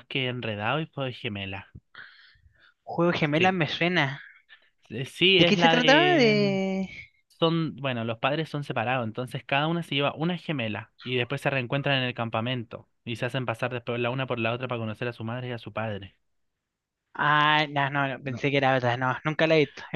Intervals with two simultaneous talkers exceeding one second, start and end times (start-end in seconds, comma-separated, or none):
5.4-6.6